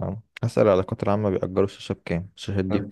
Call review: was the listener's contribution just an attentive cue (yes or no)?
no